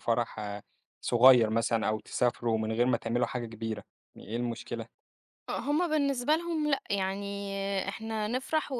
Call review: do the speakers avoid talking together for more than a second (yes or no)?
yes